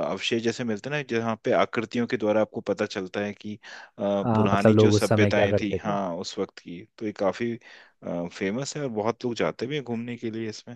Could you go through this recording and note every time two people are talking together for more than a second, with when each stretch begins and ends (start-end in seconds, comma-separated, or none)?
4.2-5.9